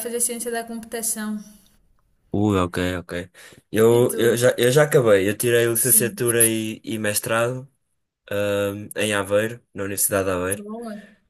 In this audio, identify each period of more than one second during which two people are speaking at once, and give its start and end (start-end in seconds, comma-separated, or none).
none